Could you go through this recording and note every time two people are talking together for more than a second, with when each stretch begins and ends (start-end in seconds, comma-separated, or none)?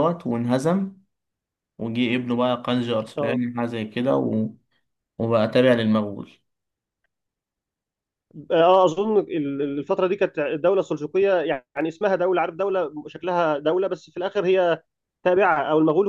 none